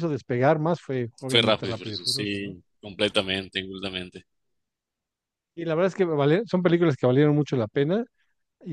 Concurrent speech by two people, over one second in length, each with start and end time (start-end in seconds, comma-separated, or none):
1.3-2.6